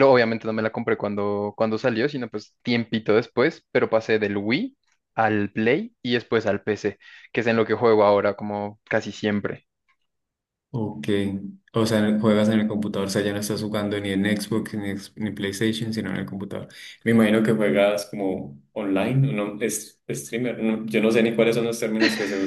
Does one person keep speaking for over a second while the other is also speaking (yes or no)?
no